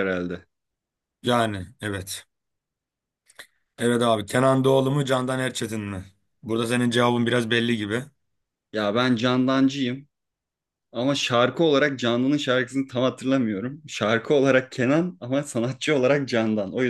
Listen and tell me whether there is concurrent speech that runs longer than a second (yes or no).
no